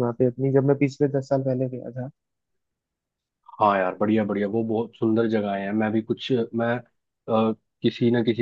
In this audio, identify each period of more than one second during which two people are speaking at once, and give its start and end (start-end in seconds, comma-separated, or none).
none